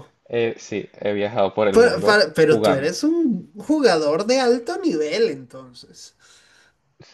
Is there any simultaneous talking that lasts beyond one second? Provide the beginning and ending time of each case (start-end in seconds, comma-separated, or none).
1.7-2.9